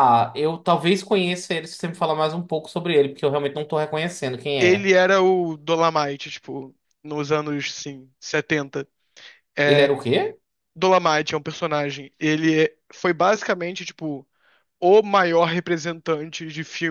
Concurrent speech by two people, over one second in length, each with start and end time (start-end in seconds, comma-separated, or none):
none